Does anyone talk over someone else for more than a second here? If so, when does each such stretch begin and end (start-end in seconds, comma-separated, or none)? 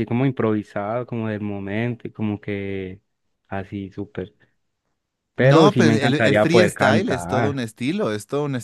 5.4-7.7